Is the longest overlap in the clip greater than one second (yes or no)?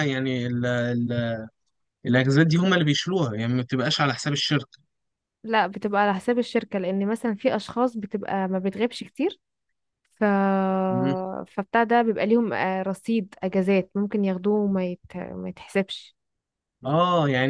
no